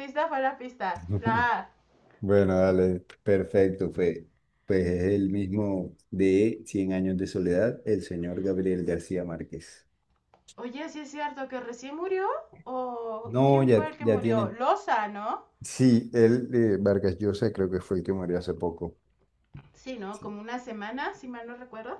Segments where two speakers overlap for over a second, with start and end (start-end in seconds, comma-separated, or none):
13.2-14.6